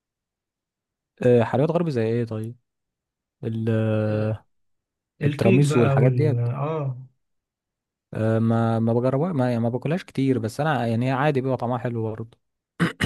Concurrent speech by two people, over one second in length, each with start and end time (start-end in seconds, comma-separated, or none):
5.2-6.5